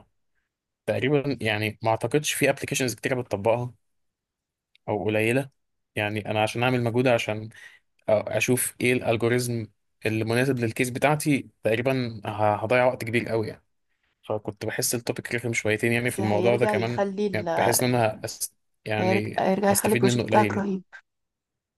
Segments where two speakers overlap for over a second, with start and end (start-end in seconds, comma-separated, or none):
16.1-17.5, 19.0-20.7